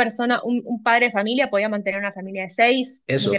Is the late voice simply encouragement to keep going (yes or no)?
no